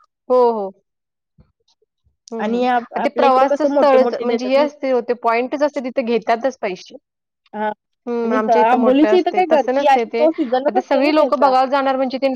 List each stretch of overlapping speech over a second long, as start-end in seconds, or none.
2.4-4.7, 8.2-11.5